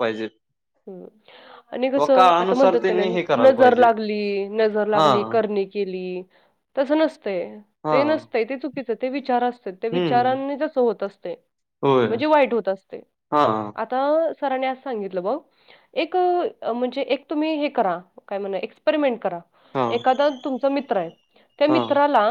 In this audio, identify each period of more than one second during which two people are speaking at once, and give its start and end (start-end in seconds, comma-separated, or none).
2.0-3.8